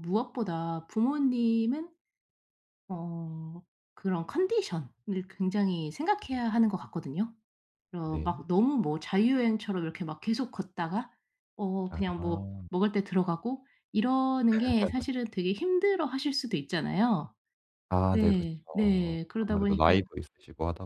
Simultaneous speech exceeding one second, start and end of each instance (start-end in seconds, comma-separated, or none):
18.1-19.9